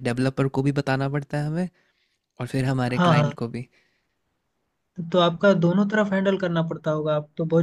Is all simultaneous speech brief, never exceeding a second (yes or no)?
yes